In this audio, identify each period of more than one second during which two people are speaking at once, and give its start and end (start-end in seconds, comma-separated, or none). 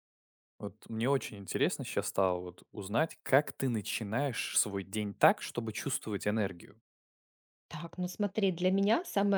none